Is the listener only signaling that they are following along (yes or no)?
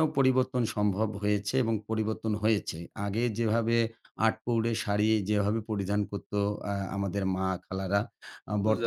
yes